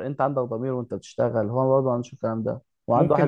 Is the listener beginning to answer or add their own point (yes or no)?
yes